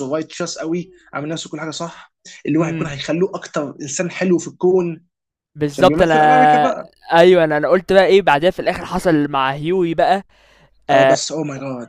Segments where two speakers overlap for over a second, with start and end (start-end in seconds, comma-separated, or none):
none